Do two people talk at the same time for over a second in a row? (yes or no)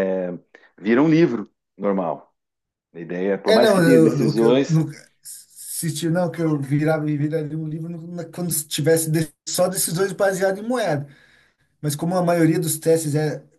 yes